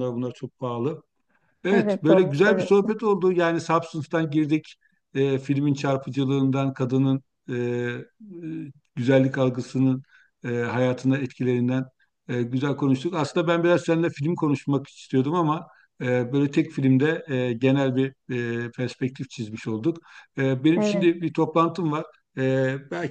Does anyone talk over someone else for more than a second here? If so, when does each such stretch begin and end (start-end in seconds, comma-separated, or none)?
1.7-2.9